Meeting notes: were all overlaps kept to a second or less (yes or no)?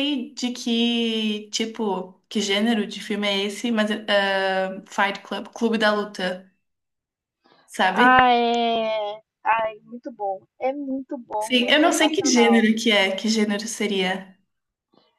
no